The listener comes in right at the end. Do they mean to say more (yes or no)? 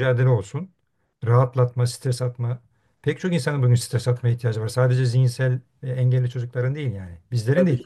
no